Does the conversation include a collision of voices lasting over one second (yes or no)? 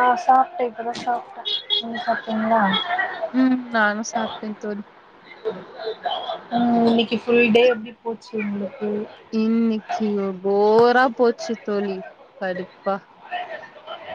no